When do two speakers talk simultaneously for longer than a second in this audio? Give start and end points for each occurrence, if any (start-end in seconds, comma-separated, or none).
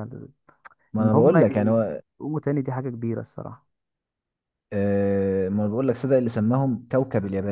none